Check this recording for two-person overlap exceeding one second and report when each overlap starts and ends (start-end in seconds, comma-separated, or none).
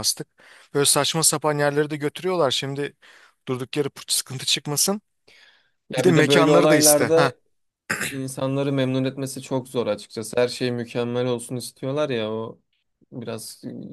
6.0-7.3